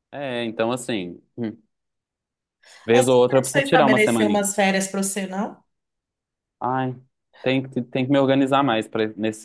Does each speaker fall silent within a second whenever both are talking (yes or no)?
no